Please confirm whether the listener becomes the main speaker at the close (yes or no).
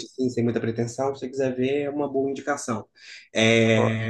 no